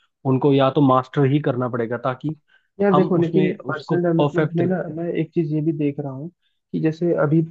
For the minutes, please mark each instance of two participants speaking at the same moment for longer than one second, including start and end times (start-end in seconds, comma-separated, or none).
2.9-4.6